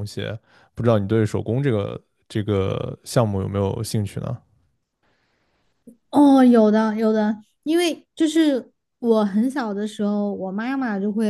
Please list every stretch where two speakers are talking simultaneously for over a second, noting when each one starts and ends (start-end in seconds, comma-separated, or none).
none